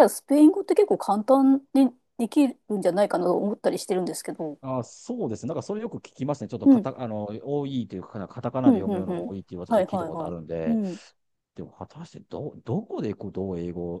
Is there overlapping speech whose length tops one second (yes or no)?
yes